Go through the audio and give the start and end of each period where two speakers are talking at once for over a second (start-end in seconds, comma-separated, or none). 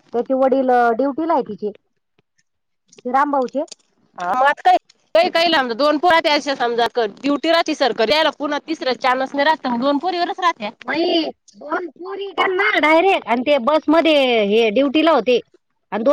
none